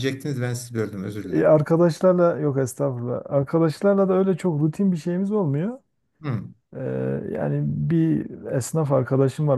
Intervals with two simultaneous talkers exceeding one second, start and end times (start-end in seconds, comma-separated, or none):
none